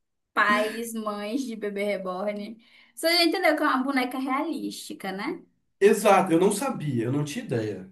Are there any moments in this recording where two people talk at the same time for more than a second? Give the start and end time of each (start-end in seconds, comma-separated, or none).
none